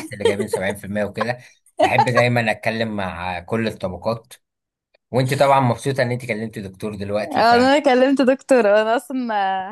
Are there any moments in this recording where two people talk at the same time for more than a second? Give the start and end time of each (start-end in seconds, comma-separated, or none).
none